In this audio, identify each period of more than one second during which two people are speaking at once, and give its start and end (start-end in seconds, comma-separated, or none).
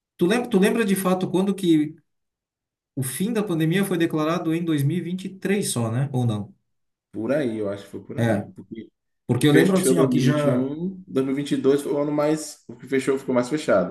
9.4-10.7